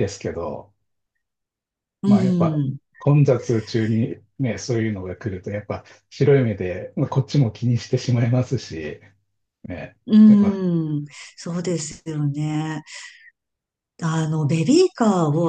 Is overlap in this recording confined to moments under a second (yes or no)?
yes